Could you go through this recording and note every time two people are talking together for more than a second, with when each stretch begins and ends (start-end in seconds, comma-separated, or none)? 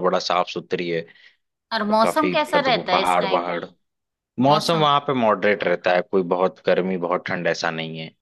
1.8-3.4